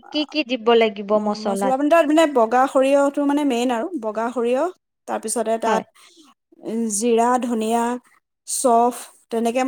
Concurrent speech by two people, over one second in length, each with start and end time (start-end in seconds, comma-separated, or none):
none